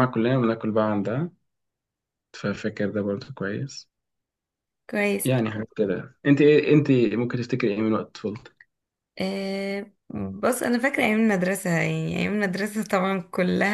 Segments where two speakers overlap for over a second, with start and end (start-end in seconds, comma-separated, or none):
none